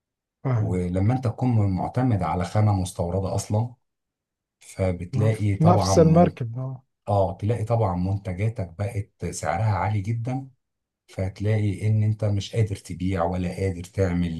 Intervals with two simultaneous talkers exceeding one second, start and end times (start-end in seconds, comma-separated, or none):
5.1-6.3